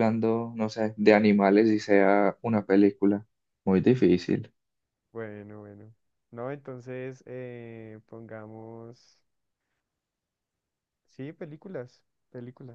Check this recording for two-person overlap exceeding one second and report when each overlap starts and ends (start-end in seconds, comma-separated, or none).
none